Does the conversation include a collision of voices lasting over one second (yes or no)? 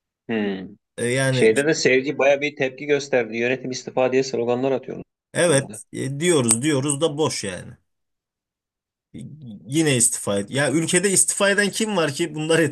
no